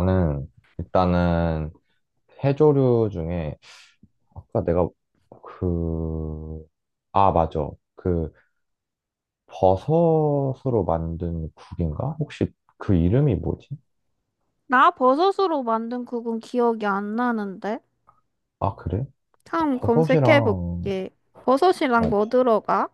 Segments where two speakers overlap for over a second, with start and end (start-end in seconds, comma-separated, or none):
19.7-21.0